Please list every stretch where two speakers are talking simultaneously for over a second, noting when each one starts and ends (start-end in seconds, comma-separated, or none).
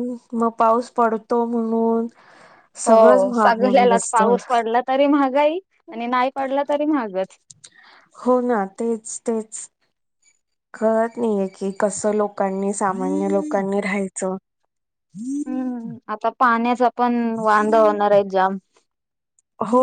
2.9-4.3